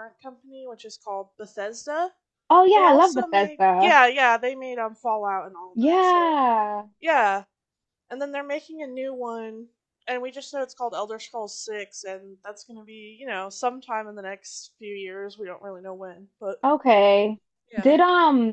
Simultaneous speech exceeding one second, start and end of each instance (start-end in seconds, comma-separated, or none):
2.8-4.0